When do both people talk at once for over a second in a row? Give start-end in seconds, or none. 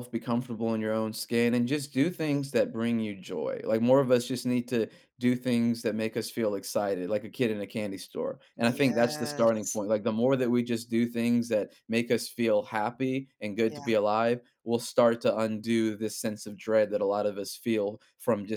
8.6-9.8